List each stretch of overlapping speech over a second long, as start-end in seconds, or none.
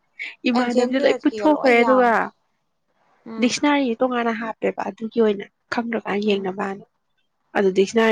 0.6-2.1